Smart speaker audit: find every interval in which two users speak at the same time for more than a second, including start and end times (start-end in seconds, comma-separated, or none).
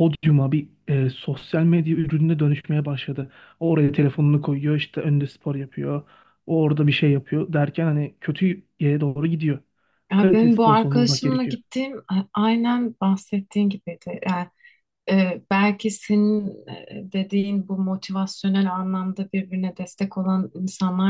10.2-11.6